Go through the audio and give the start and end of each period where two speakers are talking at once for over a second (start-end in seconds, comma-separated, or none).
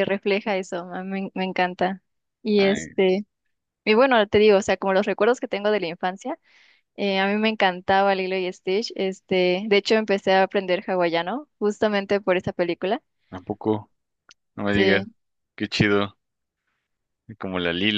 none